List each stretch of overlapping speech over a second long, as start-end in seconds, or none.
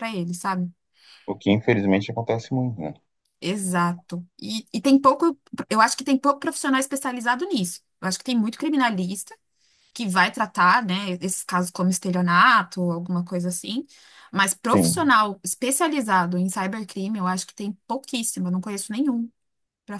none